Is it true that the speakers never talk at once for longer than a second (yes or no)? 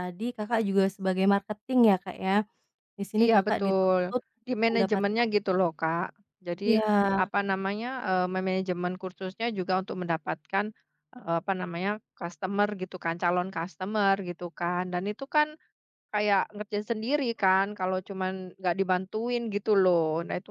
no